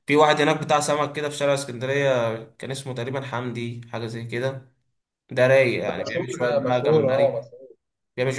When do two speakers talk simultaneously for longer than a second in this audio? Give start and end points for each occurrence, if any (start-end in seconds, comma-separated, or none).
5.9-7.4